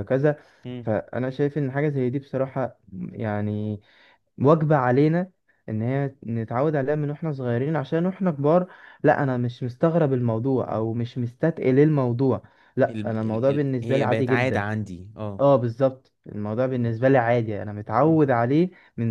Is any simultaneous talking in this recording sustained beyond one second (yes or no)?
yes